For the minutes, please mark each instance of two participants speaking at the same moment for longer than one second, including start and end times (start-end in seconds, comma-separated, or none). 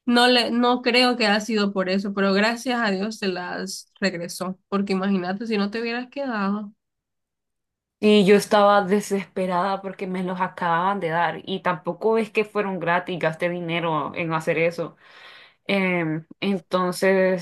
none